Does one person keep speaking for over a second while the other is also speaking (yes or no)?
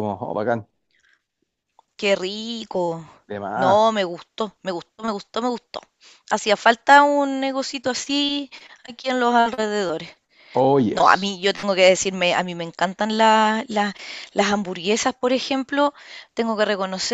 no